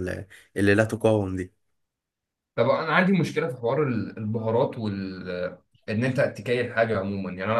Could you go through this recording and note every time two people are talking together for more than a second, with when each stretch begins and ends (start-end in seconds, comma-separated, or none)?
none